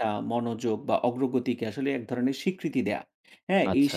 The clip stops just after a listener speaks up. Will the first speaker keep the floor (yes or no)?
yes